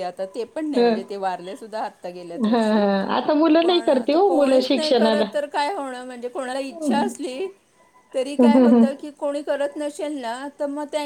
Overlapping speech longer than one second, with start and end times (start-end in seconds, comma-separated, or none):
3.6-5.2